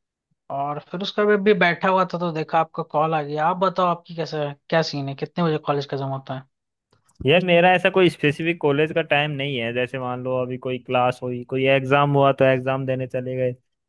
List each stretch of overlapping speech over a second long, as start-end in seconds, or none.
none